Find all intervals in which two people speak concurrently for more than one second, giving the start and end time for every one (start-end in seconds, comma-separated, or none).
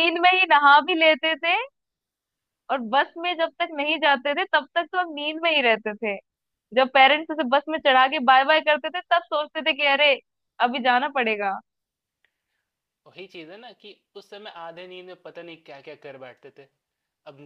none